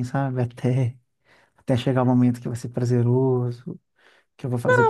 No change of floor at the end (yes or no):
no